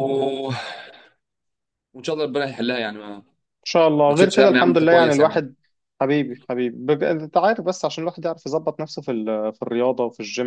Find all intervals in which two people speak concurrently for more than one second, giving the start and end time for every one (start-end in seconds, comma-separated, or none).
4.1-5.4